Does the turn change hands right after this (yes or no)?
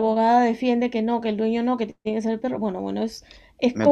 no